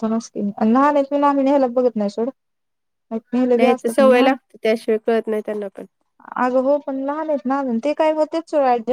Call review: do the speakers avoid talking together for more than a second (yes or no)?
yes